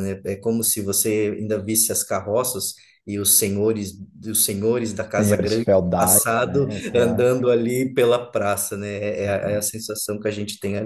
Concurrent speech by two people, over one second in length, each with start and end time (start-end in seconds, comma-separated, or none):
5.1-7.3